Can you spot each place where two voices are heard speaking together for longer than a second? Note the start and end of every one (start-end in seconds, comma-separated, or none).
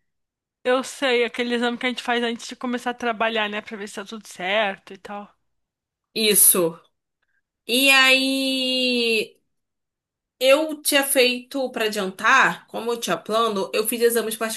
none